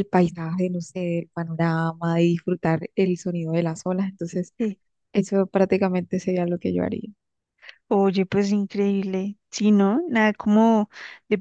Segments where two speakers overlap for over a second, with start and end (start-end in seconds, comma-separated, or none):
none